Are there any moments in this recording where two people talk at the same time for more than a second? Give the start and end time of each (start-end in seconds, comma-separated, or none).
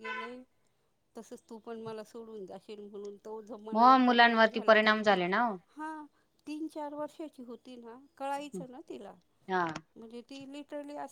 3.7-5.2